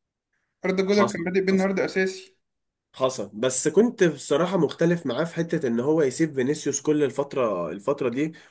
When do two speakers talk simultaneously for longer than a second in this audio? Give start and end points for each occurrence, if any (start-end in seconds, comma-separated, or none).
none